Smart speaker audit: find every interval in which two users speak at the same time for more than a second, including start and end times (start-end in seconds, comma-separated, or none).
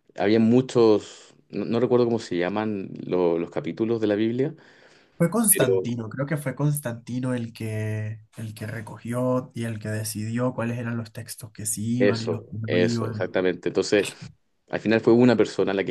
12.0-13.3